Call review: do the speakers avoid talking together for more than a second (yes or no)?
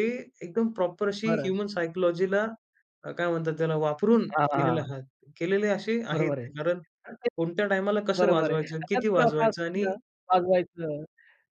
no